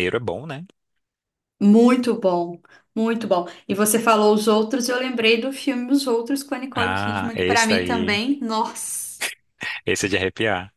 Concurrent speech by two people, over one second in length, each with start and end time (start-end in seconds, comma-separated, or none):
6.7-8.2